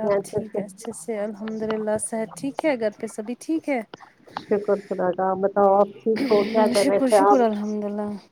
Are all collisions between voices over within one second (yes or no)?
yes